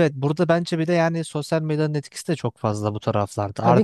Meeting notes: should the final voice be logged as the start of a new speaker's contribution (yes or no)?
no